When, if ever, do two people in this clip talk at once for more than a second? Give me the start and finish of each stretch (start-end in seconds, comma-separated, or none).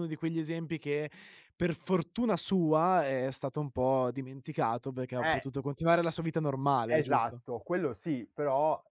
none